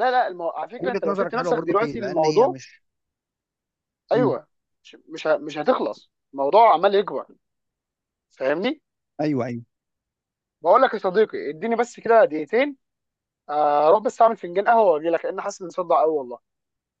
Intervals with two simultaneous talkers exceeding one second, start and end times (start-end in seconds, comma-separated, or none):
0.8-2.6